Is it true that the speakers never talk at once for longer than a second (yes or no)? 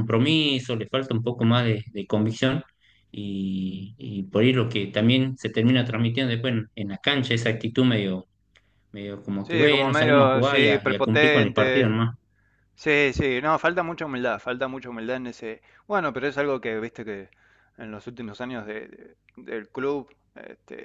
no